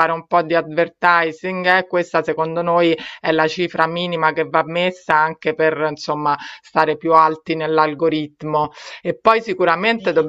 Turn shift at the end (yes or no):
no